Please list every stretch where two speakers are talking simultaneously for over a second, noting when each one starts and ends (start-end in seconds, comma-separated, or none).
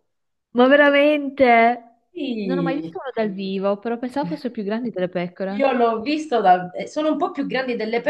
none